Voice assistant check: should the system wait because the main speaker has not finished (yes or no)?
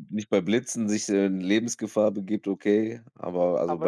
no